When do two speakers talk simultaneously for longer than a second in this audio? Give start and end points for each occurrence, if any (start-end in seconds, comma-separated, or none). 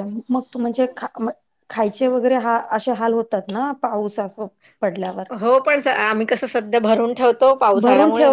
none